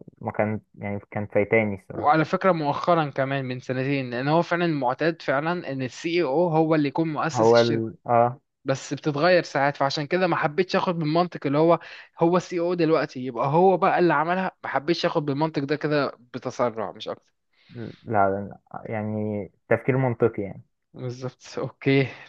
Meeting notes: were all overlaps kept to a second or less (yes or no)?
yes